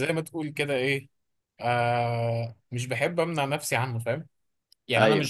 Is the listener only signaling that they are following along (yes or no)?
yes